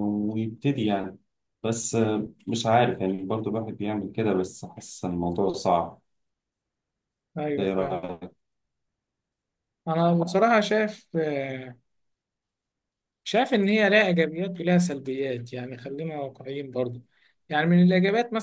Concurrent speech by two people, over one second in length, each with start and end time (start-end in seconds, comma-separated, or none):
none